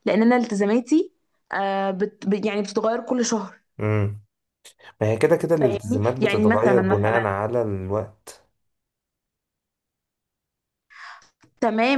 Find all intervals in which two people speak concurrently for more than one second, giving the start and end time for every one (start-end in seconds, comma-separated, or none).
5.6-7.3